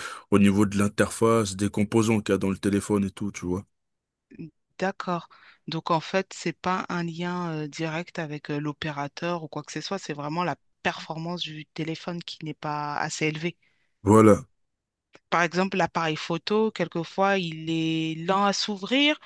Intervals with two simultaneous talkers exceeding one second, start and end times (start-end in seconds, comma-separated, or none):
none